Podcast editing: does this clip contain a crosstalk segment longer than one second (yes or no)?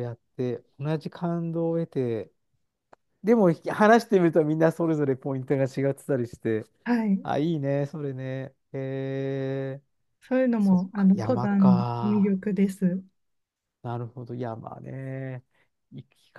yes